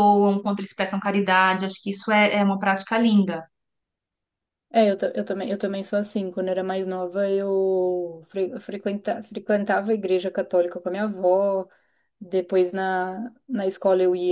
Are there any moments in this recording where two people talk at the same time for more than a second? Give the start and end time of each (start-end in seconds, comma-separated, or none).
none